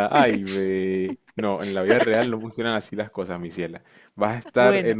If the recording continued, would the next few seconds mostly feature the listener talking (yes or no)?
no